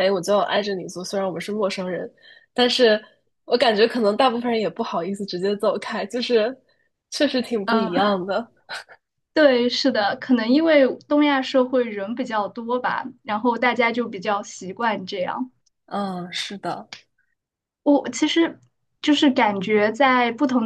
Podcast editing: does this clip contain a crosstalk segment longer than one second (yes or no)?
no